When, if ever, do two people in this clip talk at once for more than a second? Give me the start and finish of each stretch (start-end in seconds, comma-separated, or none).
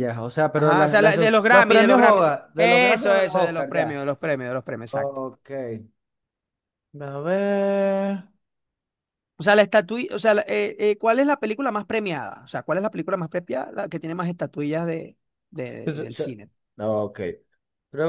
0.6-4.1